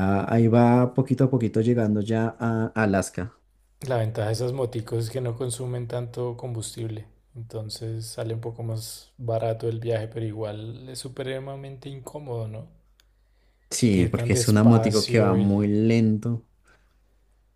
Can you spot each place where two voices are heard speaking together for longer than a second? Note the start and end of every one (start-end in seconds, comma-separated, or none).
14.0-15.7